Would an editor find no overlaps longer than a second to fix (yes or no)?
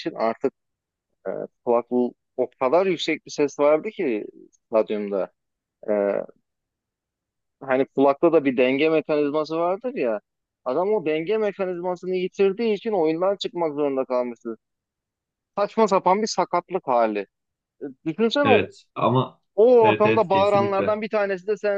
no